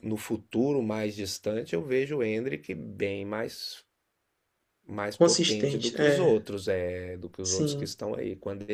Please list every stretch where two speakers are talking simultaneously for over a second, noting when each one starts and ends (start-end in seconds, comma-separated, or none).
5.1-6.4